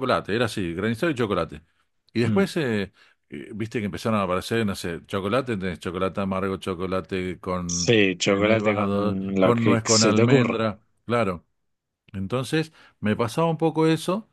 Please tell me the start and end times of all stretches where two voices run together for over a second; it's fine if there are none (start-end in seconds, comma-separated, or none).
7.7-10.7